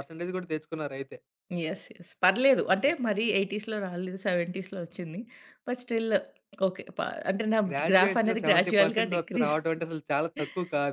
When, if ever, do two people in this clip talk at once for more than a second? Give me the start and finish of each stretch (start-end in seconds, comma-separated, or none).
7.7-9.6